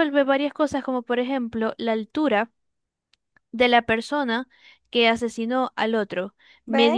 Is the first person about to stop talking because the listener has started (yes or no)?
no